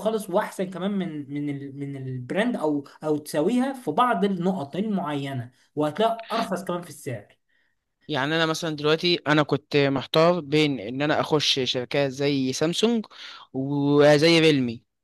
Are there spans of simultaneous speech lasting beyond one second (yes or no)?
no